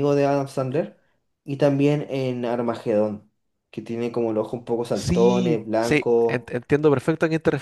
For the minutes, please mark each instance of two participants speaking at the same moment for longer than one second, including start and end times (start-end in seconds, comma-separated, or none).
4.9-6.5